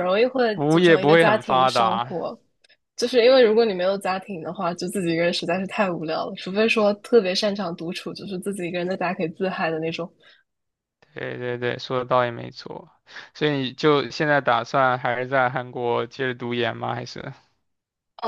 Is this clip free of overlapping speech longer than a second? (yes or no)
no